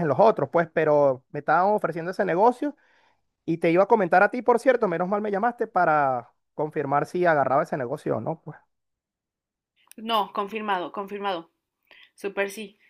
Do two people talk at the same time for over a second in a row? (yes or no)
no